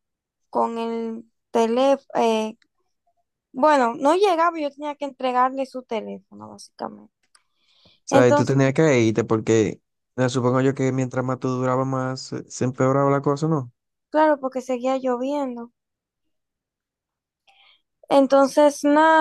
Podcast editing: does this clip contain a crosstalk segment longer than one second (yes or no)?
no